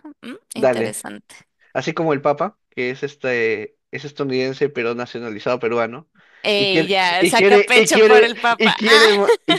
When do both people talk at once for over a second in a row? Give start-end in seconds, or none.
6.6-9.1